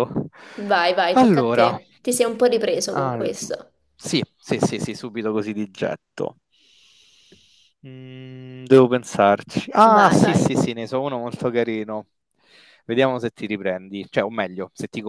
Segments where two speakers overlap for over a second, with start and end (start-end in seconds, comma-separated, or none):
none